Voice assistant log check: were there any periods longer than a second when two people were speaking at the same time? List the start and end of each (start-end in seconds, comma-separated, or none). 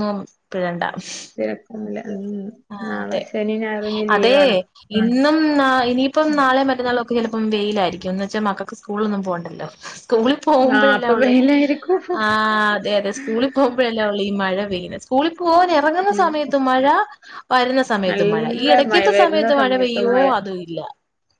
18.1-20.3